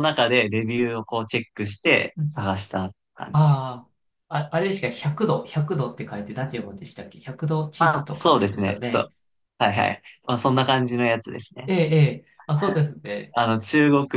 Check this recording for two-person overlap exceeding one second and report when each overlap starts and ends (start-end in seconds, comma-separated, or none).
7.8-9.1